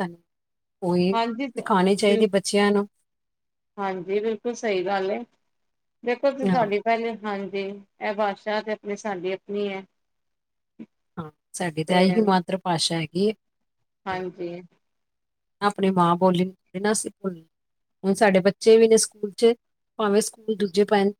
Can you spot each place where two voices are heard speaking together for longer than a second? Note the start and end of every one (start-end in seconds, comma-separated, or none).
none